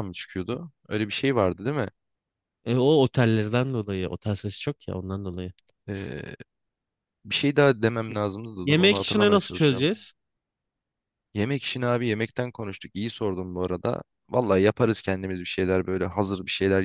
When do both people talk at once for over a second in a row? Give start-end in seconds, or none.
8.6-9.9